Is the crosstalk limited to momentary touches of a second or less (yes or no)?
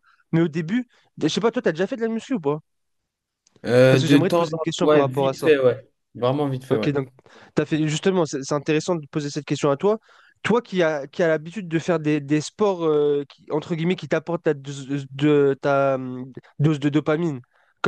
no